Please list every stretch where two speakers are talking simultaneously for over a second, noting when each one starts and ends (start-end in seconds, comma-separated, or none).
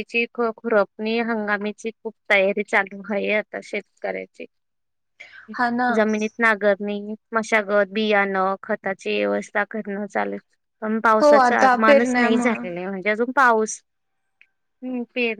11.2-12.6